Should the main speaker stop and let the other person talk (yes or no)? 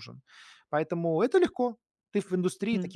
yes